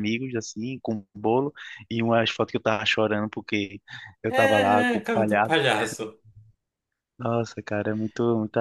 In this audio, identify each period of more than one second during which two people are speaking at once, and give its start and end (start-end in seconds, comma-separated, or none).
4.3-5.5